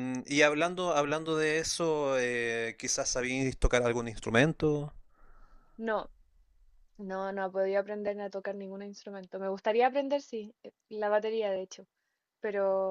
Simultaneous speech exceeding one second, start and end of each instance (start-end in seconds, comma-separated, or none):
none